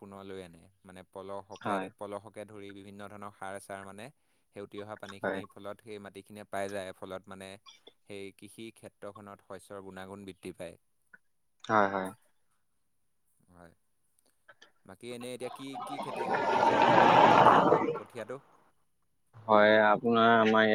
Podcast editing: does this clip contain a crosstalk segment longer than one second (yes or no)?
no